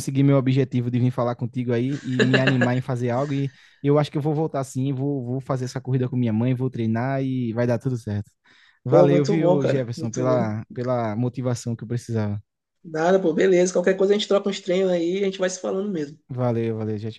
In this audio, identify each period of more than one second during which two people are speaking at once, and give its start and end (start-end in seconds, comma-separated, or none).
8.8-10.5